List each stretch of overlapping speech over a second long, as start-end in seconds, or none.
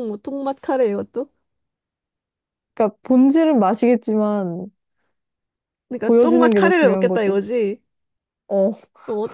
6.0-7.4